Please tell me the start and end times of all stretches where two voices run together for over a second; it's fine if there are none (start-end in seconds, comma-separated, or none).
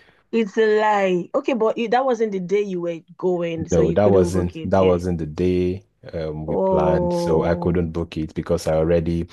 3.7-5.0, 6.5-7.8